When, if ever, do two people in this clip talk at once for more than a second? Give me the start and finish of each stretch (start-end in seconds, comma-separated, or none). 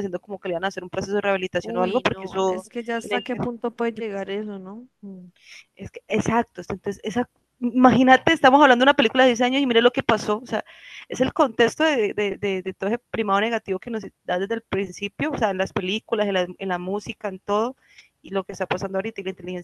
1.6-3.4